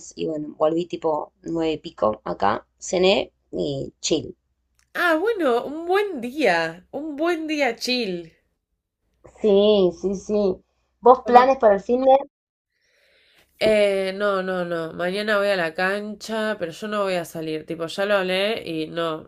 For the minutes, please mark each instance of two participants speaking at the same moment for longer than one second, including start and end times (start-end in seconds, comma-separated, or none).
none